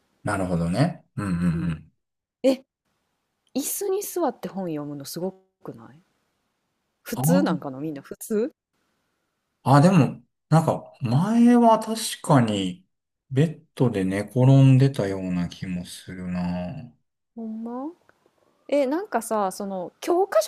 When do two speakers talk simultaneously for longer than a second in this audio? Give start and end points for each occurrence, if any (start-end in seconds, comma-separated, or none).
none